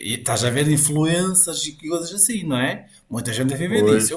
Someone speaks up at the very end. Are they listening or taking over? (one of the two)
listening